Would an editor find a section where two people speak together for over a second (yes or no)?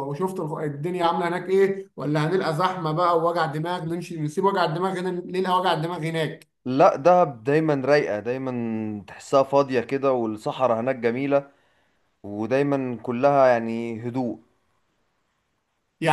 no